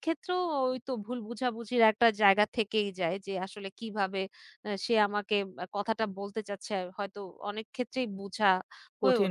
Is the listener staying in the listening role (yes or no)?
no